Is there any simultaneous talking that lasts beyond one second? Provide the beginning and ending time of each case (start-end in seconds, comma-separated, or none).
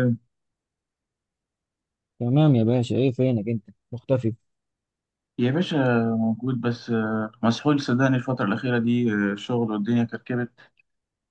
none